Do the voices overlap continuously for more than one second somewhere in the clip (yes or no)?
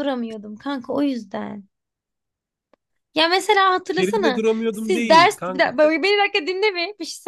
yes